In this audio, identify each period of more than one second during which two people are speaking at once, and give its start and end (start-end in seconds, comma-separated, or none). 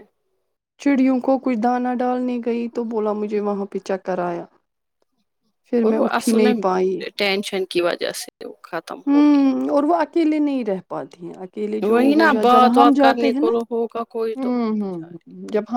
11.9-14.9